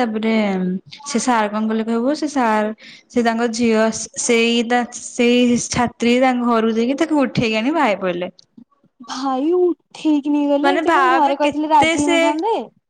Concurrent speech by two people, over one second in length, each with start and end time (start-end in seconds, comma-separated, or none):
10.7-12.2